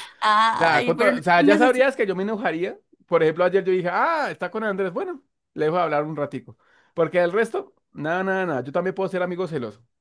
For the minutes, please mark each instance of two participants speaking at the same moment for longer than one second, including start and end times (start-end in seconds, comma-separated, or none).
0.6-1.9